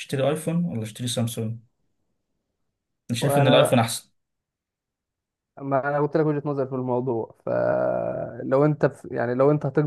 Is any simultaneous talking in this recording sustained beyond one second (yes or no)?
no